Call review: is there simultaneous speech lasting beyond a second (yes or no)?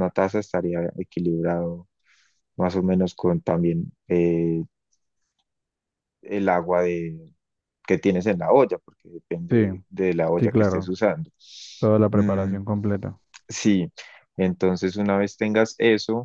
no